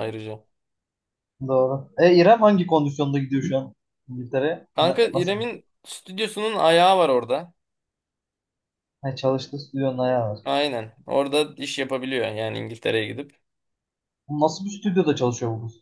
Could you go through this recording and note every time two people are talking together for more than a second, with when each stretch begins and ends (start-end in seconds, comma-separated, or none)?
none